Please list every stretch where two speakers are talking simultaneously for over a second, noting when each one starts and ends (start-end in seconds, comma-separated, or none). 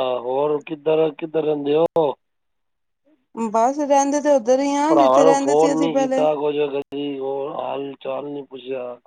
4.9-6.2